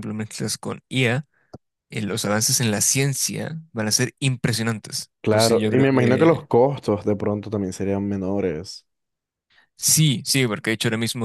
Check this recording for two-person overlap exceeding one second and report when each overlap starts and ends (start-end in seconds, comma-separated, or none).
5.2-6.5